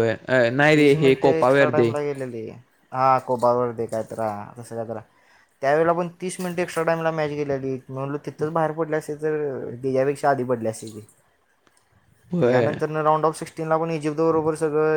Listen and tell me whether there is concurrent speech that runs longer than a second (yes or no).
no